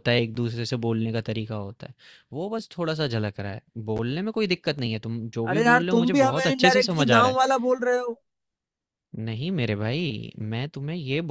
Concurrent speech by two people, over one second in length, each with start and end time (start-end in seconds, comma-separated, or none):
5.5-7.4